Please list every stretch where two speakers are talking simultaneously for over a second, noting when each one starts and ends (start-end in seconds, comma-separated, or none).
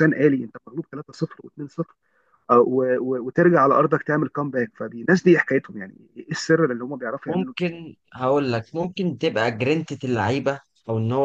none